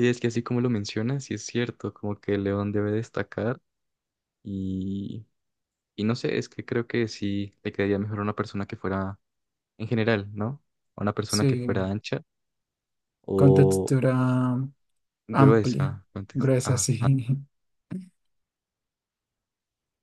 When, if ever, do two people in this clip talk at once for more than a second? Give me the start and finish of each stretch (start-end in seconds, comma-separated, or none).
15.3-16.9